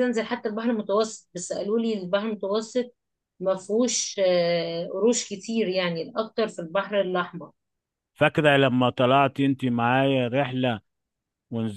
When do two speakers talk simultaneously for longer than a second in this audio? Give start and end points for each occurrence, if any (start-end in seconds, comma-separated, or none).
none